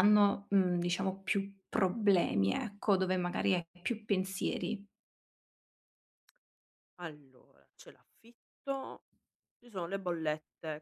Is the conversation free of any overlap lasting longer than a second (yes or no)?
yes